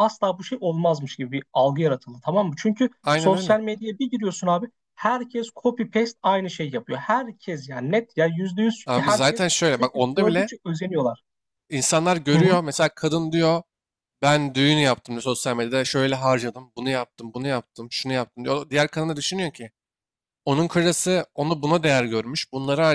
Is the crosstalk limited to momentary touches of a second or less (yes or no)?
no